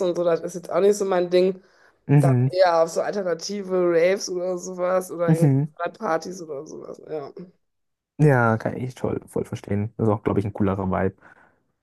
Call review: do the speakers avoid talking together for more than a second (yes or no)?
yes